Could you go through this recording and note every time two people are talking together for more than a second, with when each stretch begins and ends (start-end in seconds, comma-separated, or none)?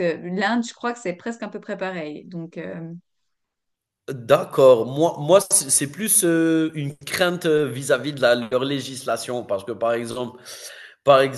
none